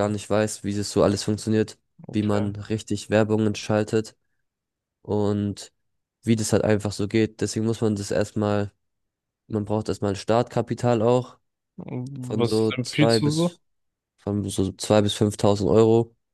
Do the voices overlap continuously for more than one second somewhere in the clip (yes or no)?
yes